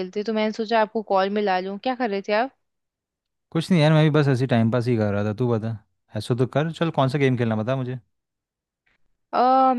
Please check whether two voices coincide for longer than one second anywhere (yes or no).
no